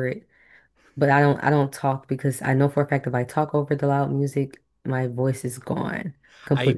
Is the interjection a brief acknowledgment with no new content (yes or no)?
no